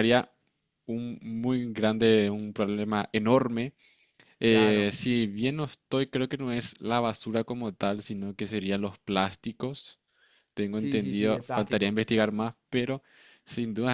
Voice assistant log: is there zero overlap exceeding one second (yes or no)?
no